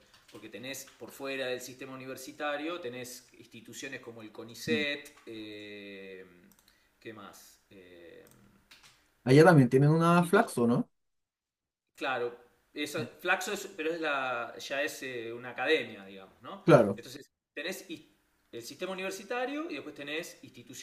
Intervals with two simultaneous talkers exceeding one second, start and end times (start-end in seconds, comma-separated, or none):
none